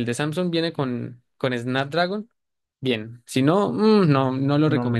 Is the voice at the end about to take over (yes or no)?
yes